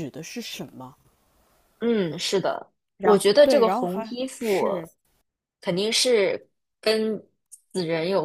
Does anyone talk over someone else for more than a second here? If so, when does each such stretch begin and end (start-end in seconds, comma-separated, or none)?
3.0-4.7